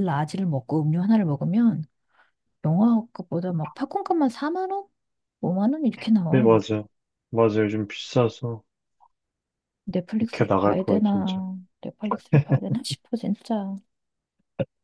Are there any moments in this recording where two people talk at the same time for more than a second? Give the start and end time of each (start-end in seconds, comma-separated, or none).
10.2-11.4